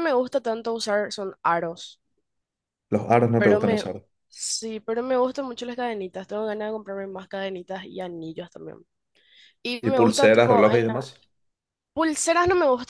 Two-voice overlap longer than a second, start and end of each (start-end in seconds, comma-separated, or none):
9.8-11.0